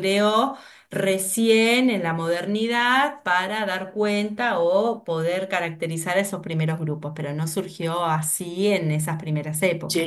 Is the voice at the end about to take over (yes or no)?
yes